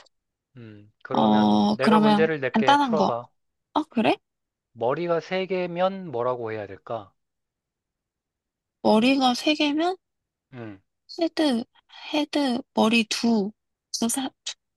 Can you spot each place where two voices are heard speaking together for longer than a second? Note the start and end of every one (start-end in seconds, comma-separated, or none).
1.1-3.1